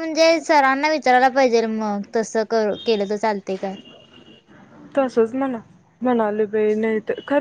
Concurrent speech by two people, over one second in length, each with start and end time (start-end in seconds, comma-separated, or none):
none